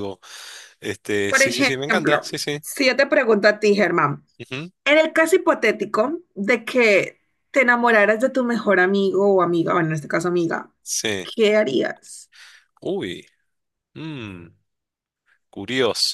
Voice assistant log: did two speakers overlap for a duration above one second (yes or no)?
yes